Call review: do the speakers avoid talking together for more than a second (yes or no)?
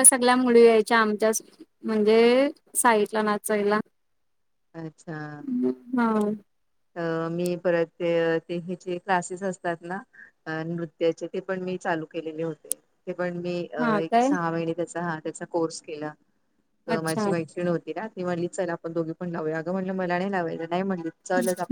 yes